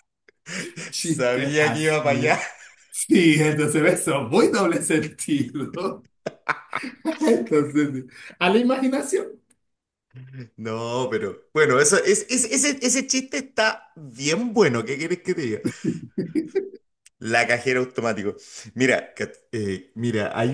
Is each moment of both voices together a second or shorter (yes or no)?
no